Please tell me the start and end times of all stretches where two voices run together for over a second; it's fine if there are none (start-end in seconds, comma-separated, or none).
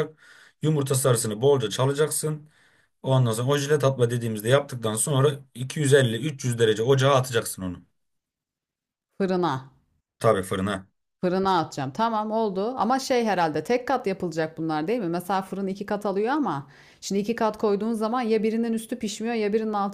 none